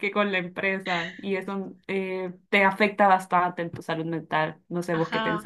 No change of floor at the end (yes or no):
no